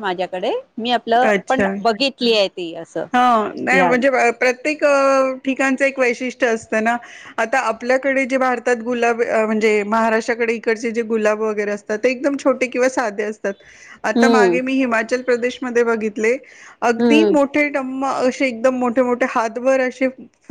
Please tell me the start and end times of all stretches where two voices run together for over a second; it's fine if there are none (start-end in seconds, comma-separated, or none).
none